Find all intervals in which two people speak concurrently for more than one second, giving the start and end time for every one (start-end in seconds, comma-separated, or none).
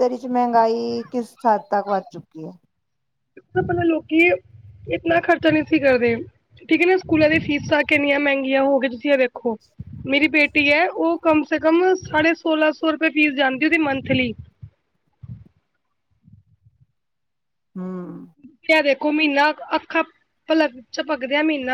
none